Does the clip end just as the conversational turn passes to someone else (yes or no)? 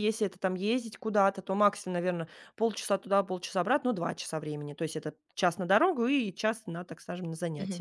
yes